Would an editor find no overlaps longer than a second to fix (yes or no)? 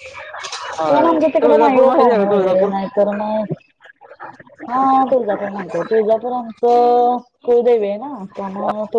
no